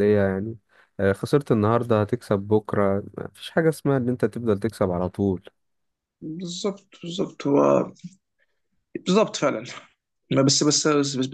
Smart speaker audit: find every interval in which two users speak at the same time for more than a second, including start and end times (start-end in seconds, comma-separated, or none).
none